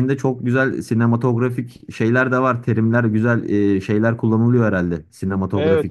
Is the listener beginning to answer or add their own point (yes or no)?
yes